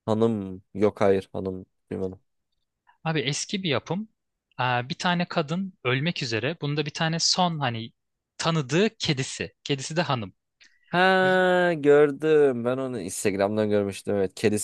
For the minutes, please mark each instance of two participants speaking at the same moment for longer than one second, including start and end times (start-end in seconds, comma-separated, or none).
none